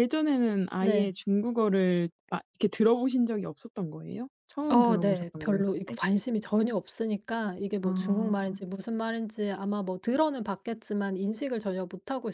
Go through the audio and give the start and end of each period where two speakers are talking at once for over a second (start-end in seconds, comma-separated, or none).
4.7-6.0